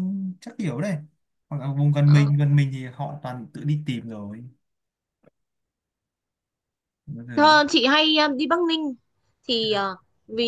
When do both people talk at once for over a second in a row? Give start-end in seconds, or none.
none